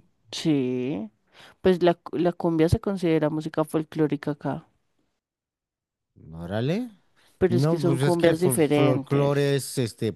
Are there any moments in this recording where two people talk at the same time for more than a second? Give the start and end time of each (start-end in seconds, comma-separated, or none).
7.5-9.5